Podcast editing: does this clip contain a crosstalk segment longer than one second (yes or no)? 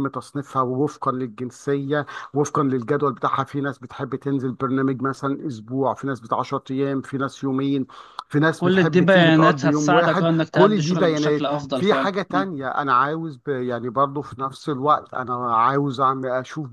yes